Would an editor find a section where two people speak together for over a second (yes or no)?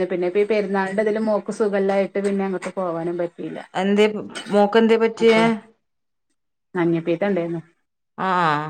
no